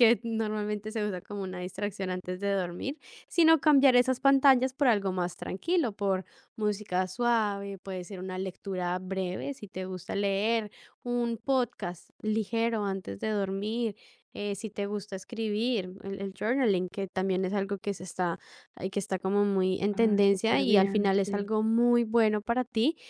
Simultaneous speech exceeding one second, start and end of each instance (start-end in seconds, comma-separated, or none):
19.9-21.5